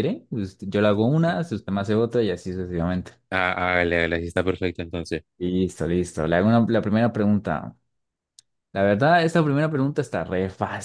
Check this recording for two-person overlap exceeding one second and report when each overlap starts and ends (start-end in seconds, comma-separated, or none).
none